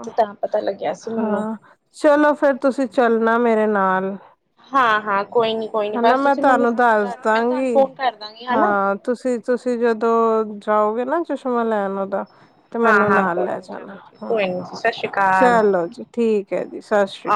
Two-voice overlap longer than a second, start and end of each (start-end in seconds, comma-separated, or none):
12.8-14.5